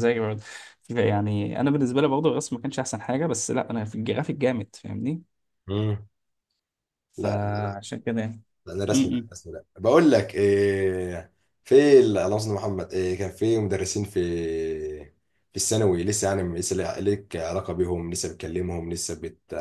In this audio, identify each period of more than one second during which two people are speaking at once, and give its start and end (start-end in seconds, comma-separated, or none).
none